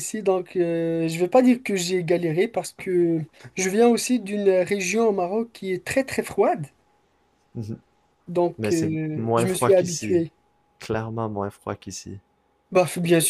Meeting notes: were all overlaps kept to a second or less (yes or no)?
no